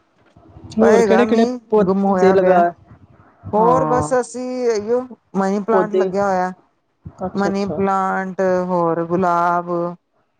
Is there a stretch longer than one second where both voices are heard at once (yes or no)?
yes